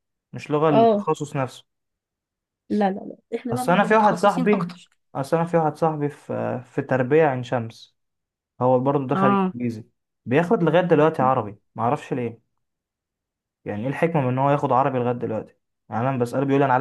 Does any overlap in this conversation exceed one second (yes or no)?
yes